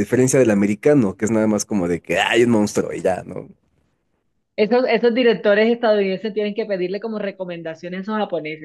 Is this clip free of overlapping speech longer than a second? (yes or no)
yes